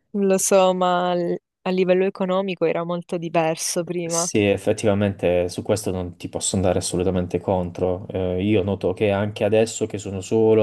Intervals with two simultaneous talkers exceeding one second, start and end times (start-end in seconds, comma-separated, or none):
none